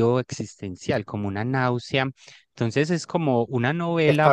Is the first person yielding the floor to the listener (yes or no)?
yes